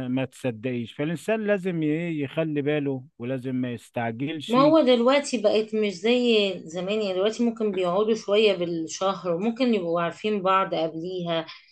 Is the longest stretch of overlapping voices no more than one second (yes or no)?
yes